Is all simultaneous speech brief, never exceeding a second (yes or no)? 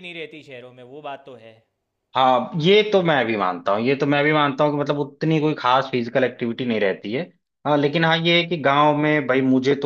yes